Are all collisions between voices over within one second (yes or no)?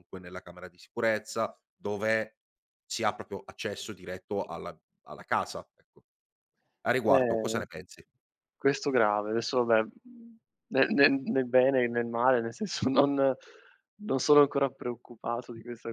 yes